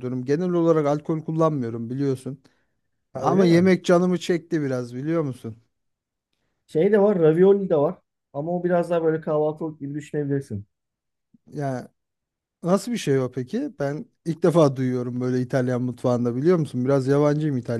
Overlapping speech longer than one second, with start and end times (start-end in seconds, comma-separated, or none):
none